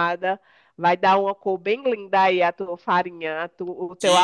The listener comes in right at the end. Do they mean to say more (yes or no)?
yes